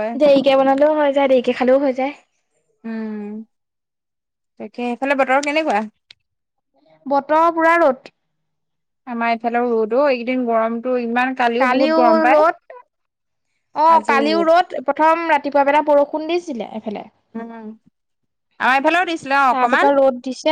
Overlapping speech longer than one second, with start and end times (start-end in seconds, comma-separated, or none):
none